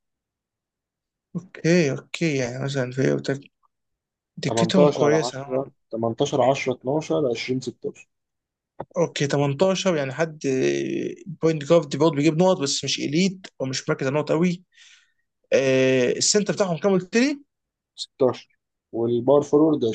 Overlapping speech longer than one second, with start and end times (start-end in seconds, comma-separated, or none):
4.4-5.7